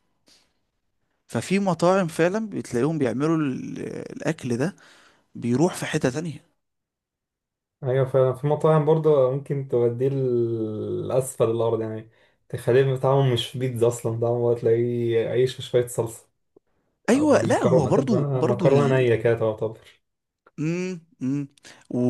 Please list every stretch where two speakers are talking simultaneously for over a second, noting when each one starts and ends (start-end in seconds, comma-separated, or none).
17.1-19.1